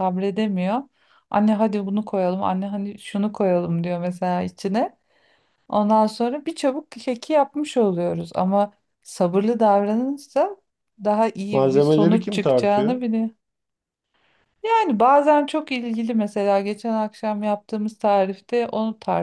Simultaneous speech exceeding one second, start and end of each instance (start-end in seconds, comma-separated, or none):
11.5-13.0